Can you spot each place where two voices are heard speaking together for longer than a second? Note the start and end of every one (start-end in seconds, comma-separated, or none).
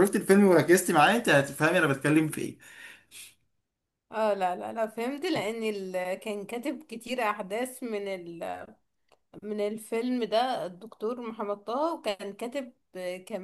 none